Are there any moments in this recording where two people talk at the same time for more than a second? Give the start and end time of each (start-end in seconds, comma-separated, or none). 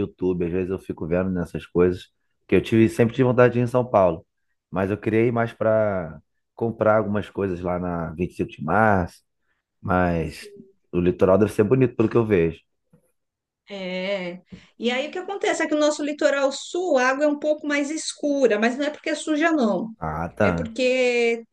none